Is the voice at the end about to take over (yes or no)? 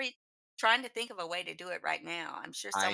yes